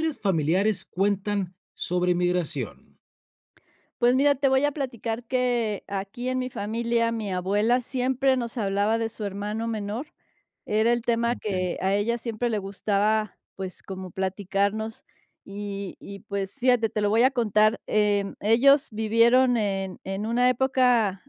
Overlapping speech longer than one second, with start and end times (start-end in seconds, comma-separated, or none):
none